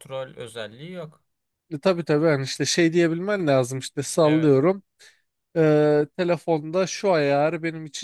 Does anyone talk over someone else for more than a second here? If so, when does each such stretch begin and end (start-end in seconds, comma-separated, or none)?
none